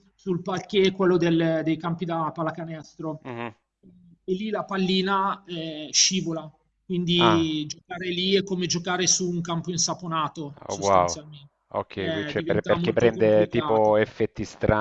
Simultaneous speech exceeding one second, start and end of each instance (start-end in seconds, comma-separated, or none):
11.9-14.0